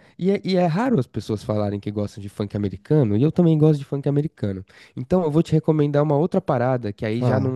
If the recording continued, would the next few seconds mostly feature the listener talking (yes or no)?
no